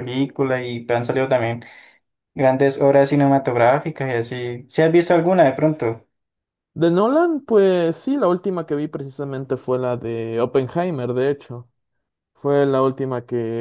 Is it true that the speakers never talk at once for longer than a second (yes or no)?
yes